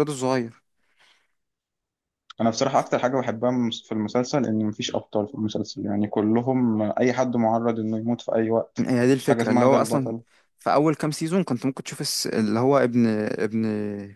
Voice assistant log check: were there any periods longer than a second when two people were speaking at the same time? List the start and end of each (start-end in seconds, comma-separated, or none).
8.8-10.1